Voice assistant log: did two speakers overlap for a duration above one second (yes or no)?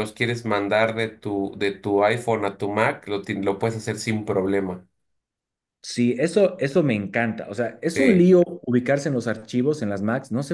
no